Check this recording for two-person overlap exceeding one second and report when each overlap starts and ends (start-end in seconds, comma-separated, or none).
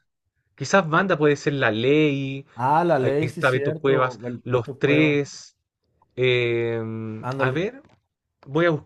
3.0-5.2